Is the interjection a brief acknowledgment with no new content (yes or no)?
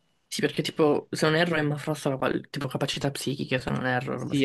no